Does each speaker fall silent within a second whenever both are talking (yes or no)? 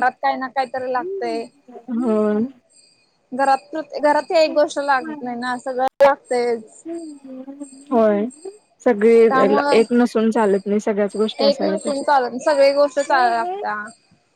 yes